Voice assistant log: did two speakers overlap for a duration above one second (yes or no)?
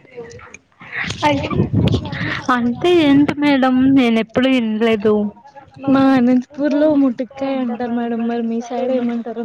no